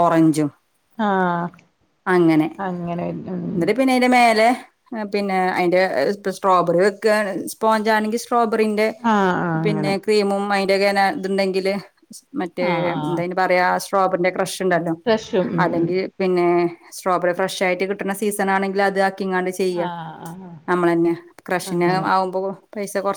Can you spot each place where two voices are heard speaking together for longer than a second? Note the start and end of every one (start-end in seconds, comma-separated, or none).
none